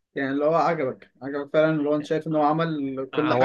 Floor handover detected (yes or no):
yes